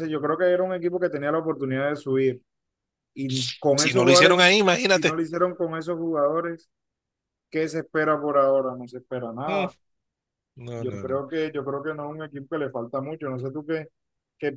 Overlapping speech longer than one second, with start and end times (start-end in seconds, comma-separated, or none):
3.8-5.2